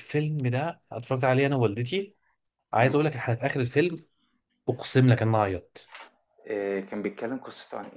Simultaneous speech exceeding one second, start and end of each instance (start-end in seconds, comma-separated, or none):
none